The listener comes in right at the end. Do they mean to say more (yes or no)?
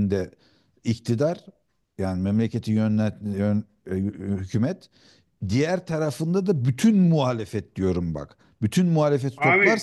no